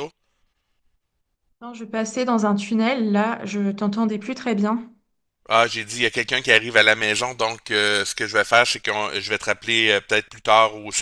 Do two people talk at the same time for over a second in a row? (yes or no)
no